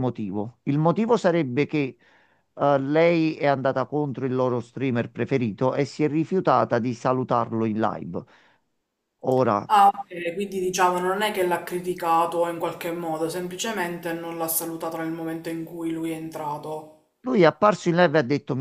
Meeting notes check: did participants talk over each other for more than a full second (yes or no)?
no